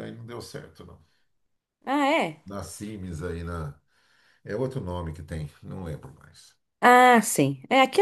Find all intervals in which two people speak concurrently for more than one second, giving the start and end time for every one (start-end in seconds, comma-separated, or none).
none